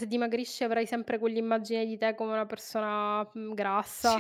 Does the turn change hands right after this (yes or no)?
yes